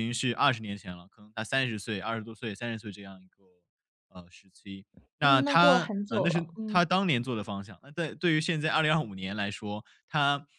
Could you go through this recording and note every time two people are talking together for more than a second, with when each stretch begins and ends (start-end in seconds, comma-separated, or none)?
5.2-6.8